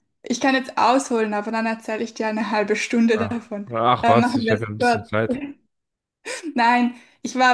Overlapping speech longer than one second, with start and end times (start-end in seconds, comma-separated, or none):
3.1-5.1